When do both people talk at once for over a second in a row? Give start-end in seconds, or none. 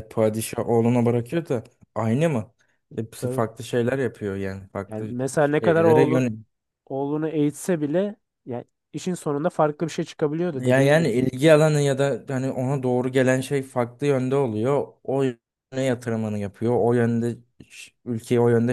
4.9-6.2